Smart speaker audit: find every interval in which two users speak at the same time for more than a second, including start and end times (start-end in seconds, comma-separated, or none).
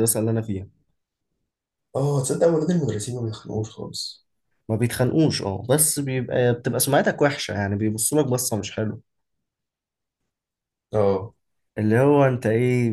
none